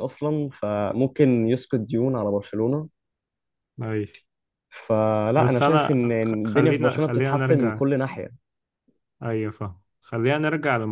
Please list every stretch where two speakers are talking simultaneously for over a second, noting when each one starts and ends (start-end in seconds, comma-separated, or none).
5.3-7.8